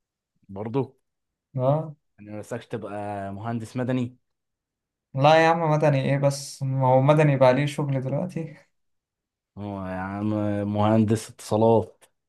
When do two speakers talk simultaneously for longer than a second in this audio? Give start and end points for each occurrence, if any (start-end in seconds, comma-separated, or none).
none